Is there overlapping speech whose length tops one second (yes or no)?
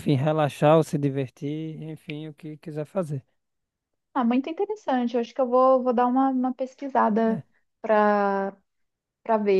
no